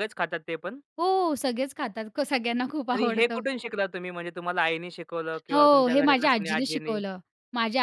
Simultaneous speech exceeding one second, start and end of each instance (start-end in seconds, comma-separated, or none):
5.5-7.0